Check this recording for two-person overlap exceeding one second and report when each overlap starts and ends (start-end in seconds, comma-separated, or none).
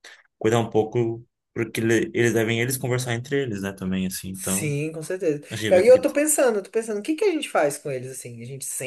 none